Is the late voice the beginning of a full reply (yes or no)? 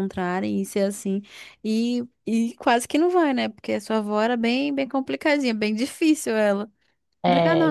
yes